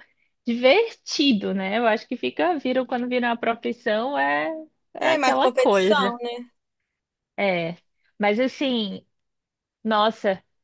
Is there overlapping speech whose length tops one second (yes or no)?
yes